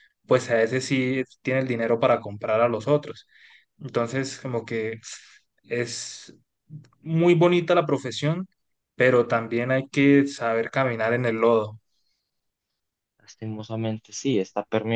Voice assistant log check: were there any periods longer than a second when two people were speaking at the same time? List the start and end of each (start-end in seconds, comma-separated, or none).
none